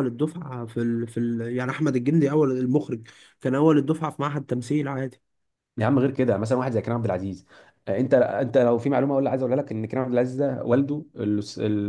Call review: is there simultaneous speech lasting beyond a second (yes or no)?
no